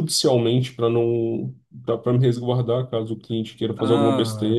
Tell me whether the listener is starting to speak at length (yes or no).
yes